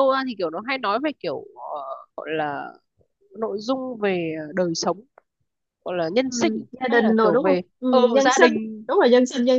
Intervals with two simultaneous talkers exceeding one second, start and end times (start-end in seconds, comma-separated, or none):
6.2-8.5